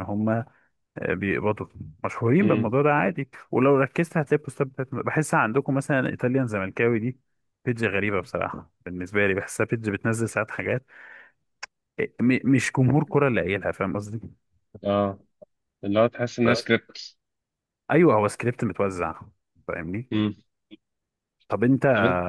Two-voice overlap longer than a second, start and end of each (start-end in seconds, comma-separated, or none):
none